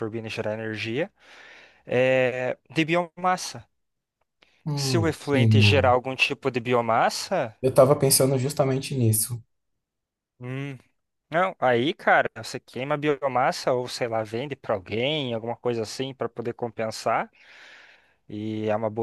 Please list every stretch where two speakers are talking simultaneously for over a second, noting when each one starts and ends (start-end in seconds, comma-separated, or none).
4.7-6.0